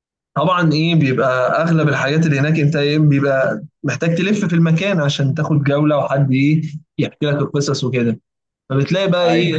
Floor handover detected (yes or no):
no